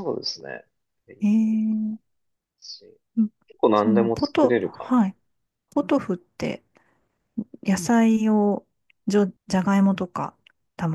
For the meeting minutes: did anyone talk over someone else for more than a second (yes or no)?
yes